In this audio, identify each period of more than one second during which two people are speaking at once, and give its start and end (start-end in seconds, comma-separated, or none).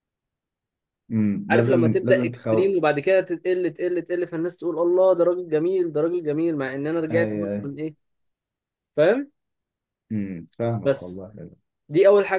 1.5-2.8